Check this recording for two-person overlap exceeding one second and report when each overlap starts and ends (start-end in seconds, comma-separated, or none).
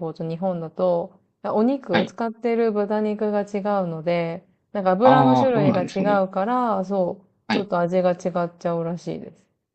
5.0-6.2